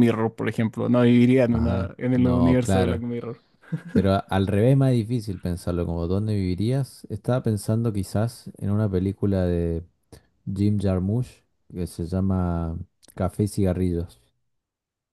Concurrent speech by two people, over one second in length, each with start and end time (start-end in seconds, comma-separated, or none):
1.5-3.0